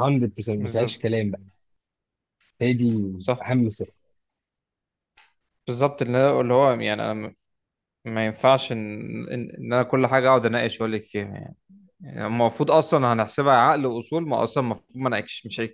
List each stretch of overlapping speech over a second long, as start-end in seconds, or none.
none